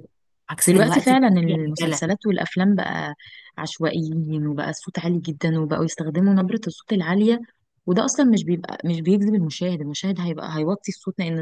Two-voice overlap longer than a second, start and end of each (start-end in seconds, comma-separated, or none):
0.7-2.0